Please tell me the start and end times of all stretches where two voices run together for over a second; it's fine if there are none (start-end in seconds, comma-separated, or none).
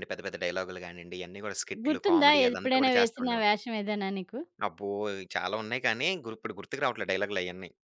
1.8-3.5